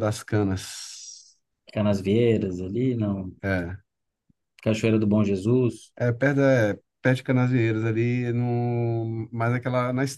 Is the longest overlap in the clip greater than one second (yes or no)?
no